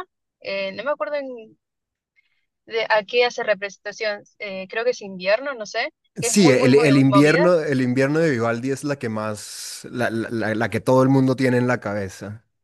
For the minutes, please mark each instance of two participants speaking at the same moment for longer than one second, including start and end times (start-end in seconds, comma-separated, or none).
6.2-7.5